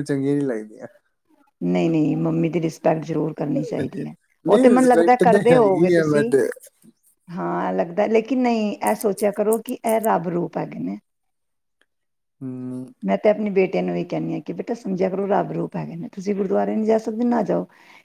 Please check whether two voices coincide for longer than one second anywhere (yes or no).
yes